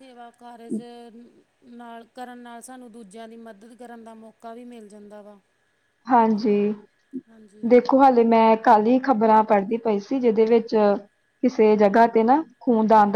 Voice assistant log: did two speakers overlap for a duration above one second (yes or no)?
no